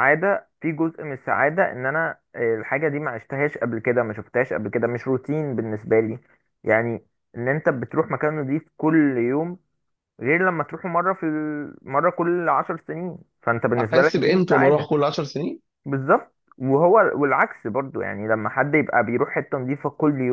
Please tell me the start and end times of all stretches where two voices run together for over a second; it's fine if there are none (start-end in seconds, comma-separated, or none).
13.8-15.0